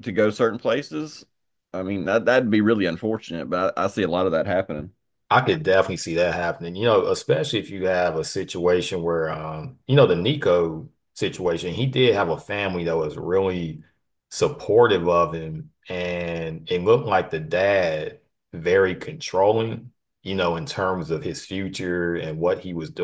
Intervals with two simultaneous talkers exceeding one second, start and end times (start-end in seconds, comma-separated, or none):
none